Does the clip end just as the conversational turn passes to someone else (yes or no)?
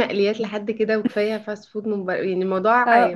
yes